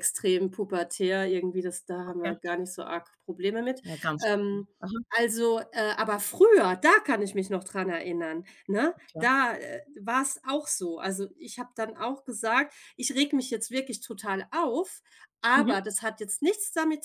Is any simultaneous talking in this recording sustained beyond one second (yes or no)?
no